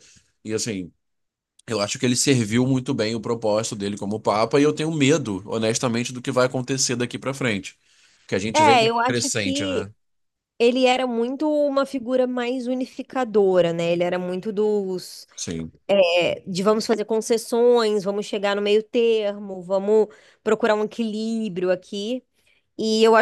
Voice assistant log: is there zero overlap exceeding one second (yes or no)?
no